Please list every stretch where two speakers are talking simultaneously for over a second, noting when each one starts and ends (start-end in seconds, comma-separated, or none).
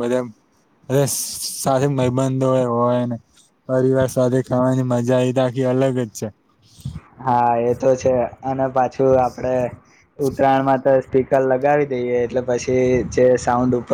none